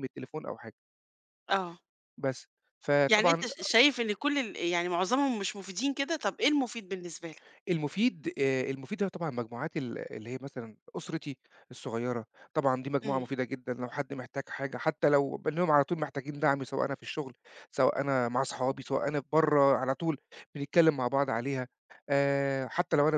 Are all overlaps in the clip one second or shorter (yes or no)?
yes